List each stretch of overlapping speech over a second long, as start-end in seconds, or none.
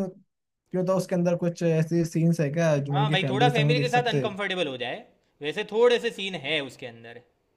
2.9-4.2